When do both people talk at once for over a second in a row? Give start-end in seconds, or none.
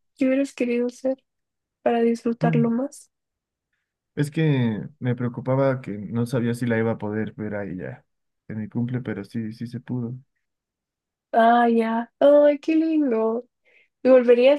none